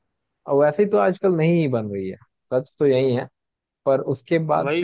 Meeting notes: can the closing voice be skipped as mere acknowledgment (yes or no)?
no